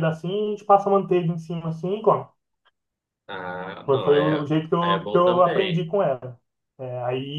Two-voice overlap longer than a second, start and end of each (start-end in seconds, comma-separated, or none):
3.9-5.9